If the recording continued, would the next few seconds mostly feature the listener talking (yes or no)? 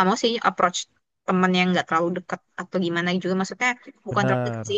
no